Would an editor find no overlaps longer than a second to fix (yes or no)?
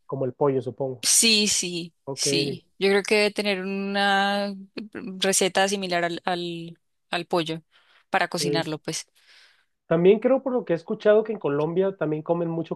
yes